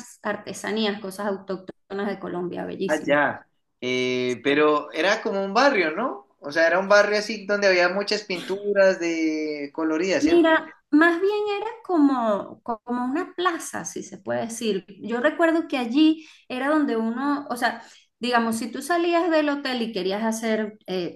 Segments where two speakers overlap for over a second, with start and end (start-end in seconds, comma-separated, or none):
none